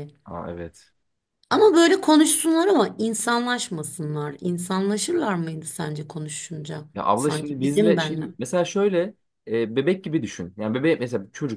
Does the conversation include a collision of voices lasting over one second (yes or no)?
yes